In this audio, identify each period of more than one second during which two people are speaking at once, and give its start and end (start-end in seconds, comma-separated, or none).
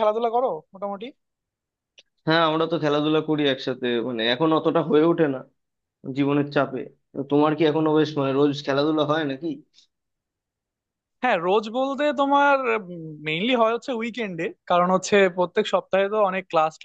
none